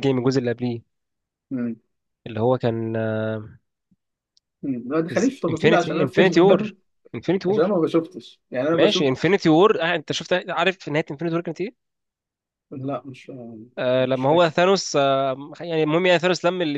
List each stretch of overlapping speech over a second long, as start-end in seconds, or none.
5.5-6.7